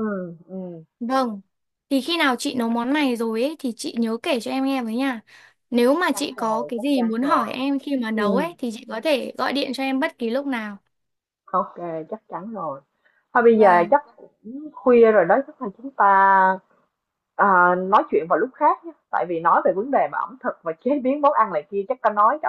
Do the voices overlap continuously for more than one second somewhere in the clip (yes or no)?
yes